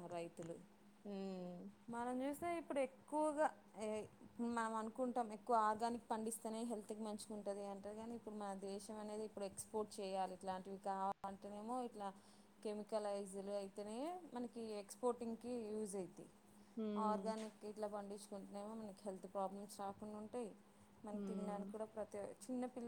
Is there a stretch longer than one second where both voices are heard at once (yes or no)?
no